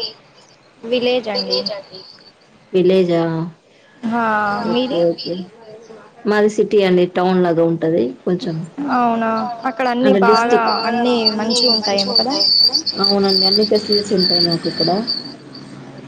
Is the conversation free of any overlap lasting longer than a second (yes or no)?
no